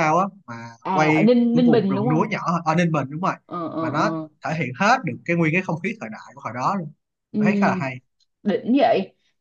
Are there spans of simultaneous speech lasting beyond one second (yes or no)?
yes